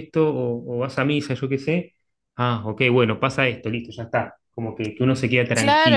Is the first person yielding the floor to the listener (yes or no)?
yes